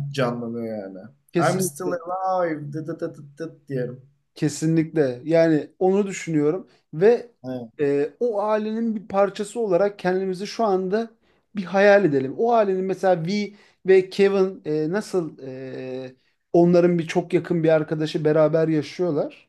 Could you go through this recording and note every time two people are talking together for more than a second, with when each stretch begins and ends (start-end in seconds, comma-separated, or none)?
none